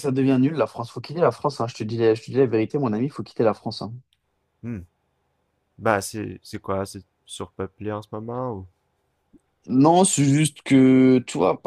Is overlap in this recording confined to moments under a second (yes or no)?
yes